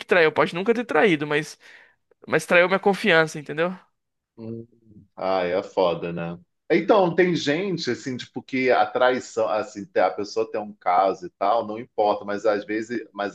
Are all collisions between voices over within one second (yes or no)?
yes